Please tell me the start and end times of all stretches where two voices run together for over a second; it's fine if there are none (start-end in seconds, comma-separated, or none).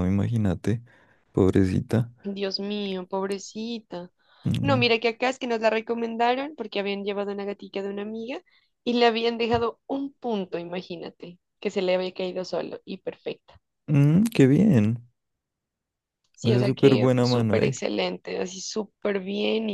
16.4-17.7